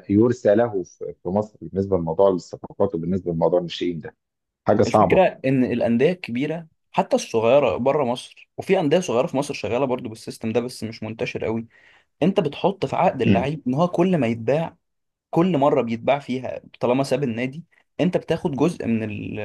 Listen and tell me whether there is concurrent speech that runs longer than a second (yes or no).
no